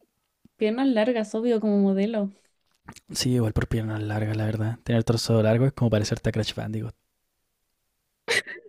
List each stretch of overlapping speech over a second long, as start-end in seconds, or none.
none